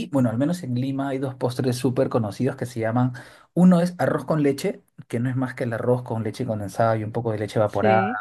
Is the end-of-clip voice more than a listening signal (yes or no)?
yes